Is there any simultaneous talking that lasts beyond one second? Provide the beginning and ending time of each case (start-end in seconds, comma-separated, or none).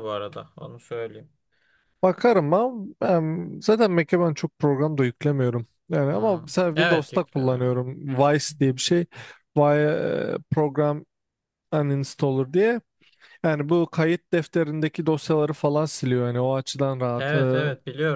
6.1-7.8